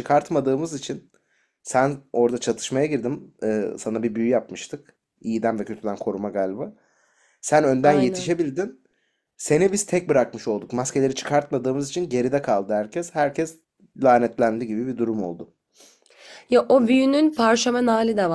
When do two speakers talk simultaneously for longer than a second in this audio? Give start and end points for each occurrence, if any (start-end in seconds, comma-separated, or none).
none